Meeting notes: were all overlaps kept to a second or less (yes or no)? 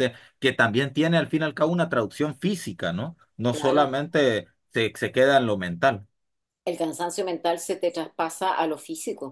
yes